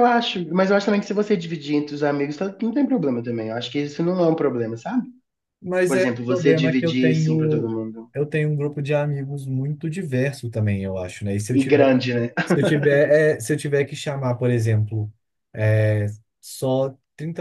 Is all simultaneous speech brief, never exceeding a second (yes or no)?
no